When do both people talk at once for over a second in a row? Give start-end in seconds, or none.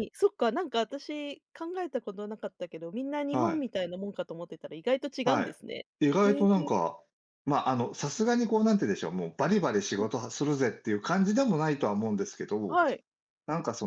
none